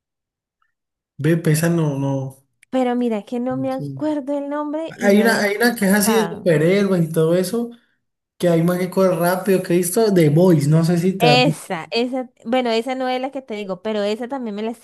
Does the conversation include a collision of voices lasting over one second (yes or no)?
yes